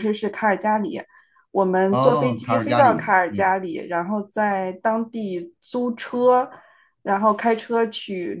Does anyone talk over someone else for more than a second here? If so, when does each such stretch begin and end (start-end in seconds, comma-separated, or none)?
1.9-3.5